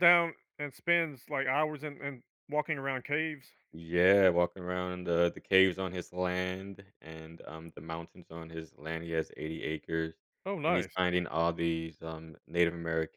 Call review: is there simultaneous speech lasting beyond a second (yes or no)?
no